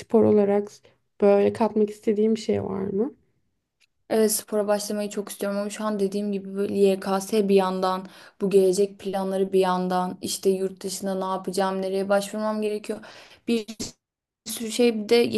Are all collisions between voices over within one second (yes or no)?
yes